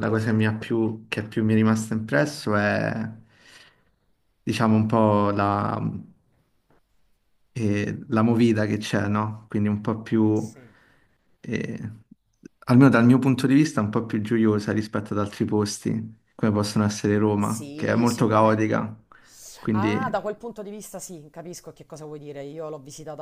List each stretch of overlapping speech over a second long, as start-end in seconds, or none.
17.4-18.6